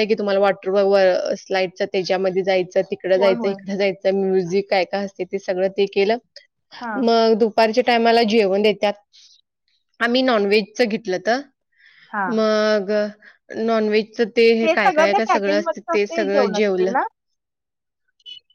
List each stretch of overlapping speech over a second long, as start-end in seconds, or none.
14.8-16.9